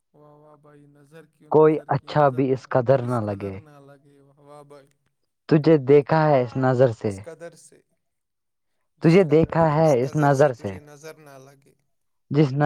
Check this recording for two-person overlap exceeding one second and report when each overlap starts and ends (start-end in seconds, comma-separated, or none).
1.6-3.6